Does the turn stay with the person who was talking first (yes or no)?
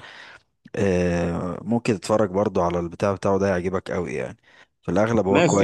no